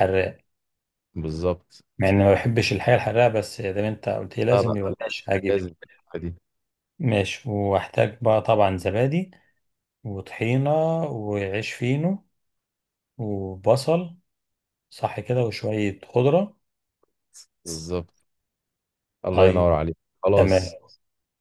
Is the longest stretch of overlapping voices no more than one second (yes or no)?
yes